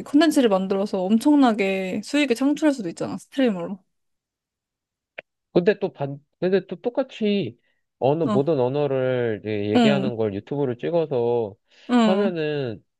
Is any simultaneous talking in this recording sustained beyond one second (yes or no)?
no